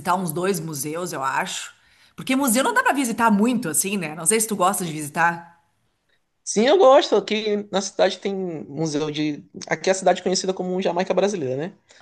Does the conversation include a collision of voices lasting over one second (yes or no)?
no